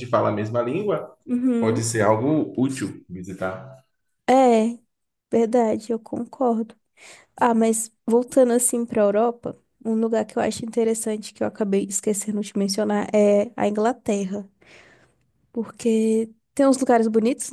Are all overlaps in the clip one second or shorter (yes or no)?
yes